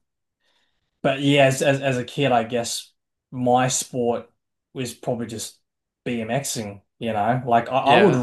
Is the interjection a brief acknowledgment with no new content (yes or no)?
no